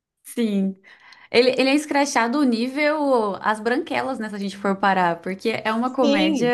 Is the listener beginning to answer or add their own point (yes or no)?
yes